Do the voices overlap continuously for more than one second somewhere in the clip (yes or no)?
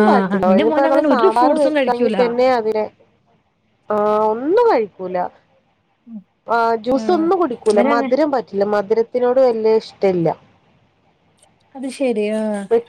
yes